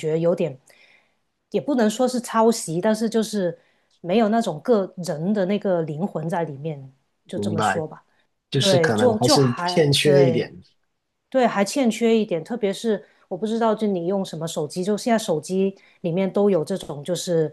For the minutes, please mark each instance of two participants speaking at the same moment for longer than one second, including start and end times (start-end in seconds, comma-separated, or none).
8.6-10.4